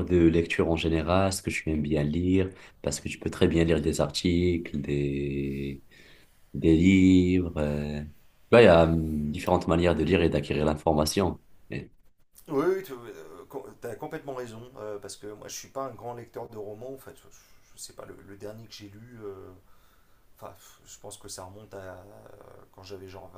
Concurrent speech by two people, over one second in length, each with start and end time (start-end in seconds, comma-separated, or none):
none